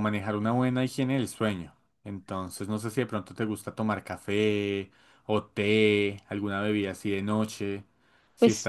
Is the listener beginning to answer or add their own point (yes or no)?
yes